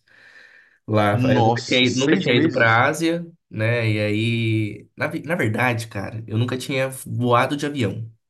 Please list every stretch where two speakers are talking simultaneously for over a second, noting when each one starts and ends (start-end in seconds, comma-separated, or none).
1.1-2.8